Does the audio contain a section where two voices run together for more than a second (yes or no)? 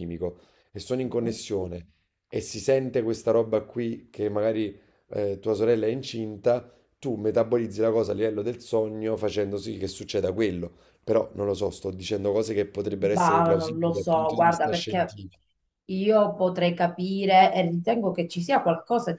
yes